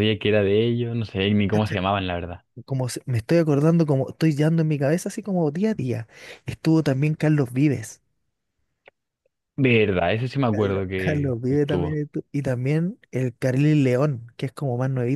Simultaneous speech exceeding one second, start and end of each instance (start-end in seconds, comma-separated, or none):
10.5-12.0